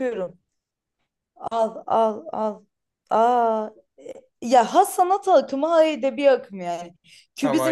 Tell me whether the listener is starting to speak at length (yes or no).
no